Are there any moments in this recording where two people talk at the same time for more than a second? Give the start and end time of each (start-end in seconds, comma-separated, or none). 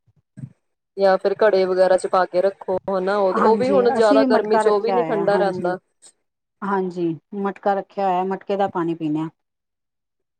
3.4-5.7